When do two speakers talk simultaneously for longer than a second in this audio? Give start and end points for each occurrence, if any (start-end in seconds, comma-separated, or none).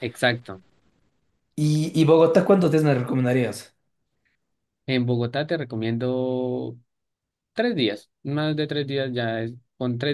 none